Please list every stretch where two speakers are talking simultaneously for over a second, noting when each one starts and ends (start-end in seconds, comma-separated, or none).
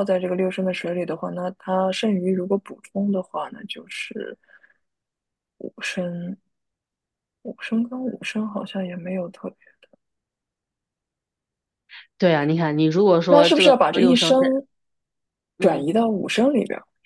13.3-14.5